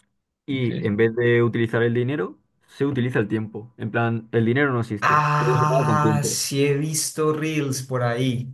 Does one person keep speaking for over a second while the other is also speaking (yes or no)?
yes